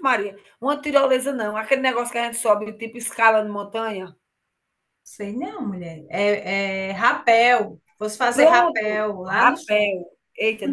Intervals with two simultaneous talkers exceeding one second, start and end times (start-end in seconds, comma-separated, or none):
8.3-10.0